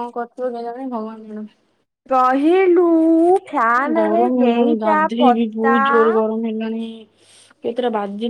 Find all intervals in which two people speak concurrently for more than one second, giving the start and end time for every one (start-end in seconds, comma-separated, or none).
4.0-5.8